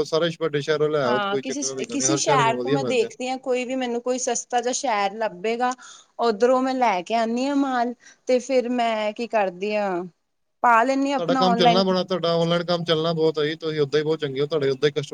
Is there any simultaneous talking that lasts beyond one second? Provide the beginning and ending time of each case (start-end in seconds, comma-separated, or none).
1.1-3.1